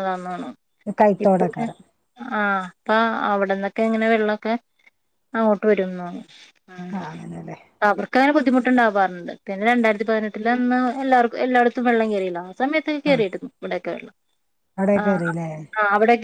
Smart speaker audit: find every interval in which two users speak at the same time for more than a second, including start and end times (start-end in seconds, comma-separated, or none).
none